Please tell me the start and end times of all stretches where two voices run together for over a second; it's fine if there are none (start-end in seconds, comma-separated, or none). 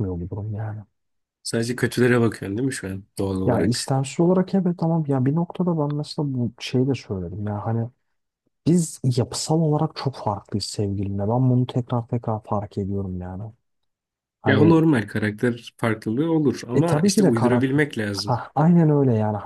16.7-18.4